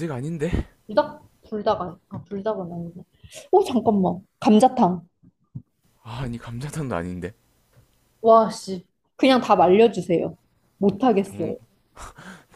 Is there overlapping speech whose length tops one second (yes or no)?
no